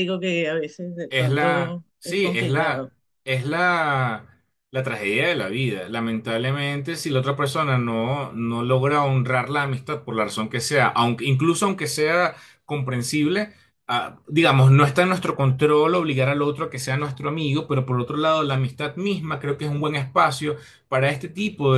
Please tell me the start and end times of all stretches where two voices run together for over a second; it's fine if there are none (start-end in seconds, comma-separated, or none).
1.1-2.9